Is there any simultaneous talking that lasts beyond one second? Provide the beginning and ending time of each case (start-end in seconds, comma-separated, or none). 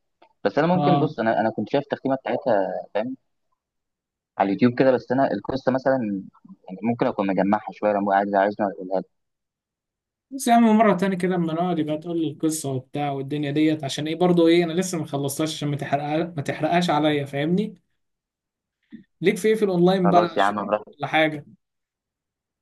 none